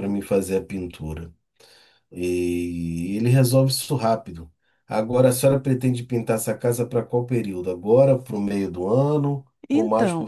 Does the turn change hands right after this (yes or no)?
yes